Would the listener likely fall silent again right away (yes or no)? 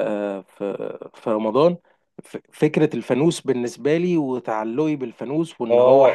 no